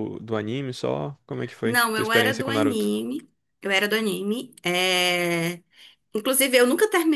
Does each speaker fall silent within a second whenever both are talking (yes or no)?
no